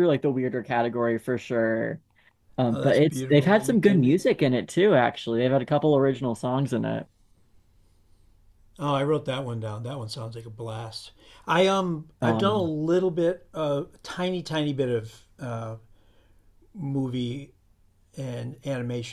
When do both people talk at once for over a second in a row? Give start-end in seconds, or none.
2.7-4.2